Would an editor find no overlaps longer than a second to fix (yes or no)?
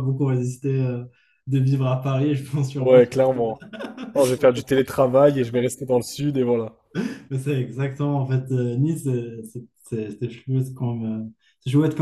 yes